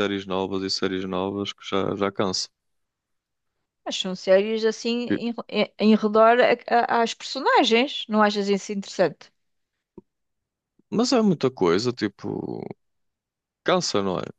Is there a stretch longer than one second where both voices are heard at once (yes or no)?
no